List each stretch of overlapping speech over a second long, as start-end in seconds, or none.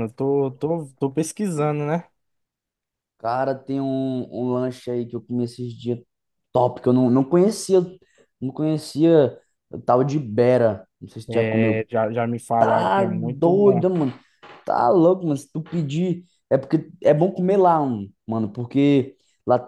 12.6-13.8